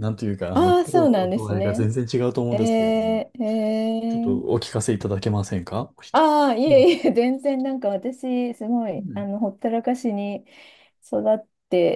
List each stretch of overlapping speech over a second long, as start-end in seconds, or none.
0.5-1.9